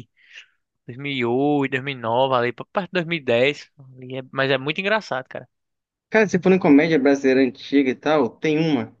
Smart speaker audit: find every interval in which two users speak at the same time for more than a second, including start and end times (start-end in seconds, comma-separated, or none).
none